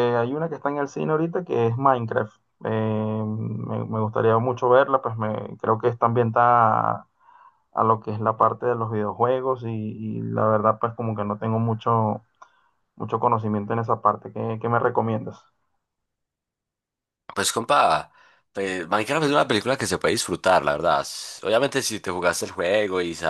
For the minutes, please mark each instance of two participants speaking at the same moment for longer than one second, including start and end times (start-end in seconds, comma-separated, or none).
none